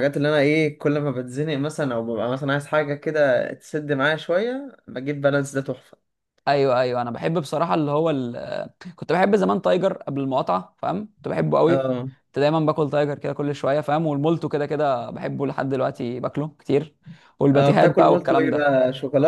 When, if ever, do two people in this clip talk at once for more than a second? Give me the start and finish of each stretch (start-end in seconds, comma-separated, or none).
17.5-18.8